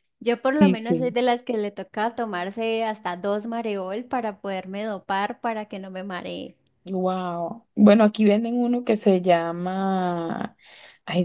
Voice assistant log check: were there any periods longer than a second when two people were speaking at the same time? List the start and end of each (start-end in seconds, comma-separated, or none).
none